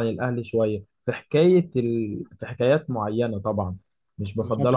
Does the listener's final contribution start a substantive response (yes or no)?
yes